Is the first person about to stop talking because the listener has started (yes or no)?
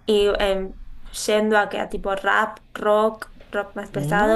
yes